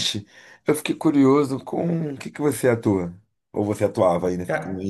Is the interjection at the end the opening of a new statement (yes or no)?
yes